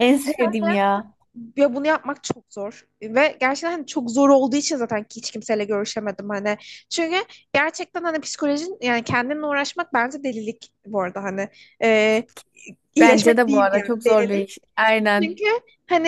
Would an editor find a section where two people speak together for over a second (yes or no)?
yes